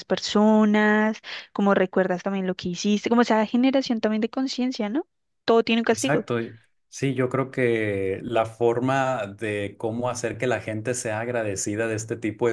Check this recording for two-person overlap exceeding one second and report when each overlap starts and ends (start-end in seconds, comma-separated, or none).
none